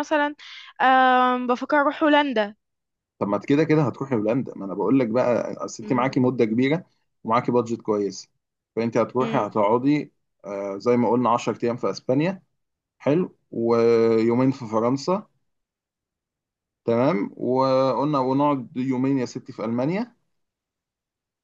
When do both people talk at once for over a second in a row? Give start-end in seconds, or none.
none